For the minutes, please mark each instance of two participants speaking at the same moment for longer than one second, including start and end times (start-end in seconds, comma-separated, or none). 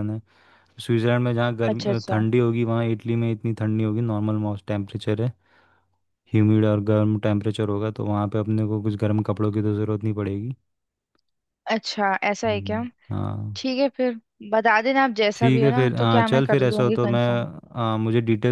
15.3-17.2